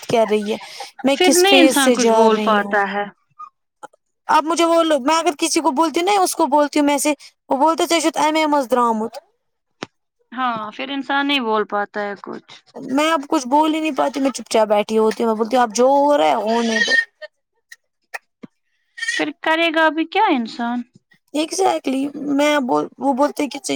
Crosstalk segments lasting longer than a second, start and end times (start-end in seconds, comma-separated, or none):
1.2-2.8